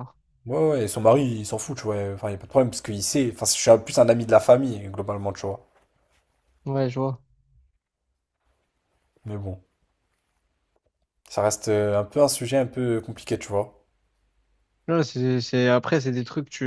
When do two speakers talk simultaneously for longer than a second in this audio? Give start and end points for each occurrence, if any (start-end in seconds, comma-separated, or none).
none